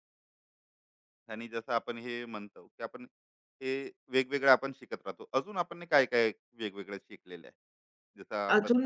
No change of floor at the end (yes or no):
no